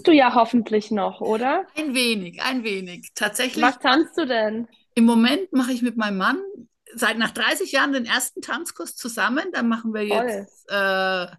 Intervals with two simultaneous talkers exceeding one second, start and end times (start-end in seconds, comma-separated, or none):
none